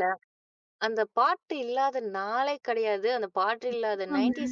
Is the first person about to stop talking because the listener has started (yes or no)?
no